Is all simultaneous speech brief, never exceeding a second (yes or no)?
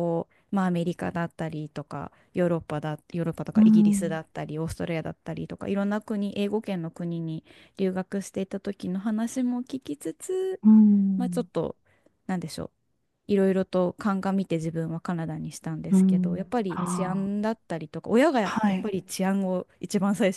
no